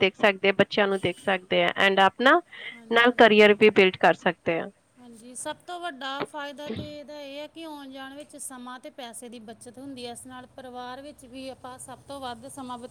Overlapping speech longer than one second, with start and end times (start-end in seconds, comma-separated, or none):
none